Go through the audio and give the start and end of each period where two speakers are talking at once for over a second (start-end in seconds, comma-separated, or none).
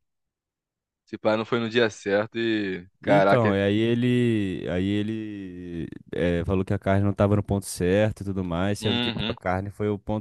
none